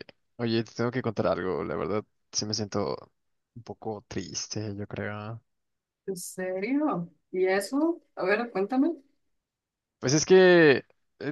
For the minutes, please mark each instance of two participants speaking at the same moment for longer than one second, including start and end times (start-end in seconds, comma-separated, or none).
none